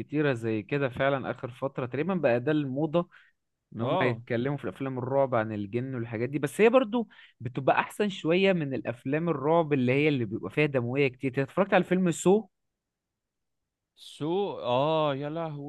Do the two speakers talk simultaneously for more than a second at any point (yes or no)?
no